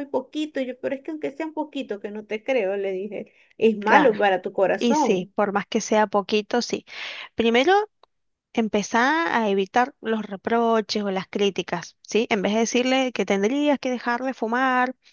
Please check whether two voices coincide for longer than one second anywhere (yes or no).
no